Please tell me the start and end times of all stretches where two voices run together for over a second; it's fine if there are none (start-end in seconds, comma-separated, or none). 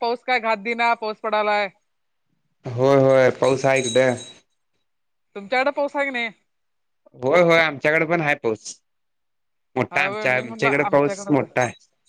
9.9-11.4